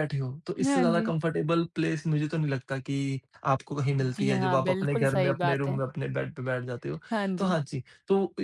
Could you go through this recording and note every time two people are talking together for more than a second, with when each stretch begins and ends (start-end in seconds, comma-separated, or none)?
4.2-5.8